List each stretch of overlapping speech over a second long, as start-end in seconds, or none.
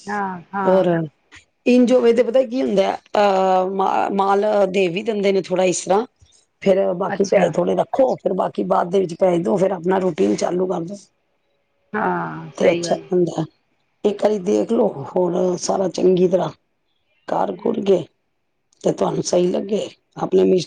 none